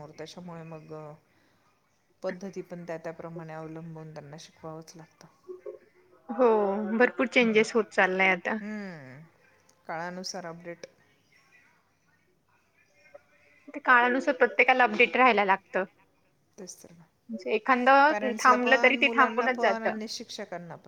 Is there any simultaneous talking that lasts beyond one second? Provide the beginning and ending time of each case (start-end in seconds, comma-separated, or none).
18.1-19.9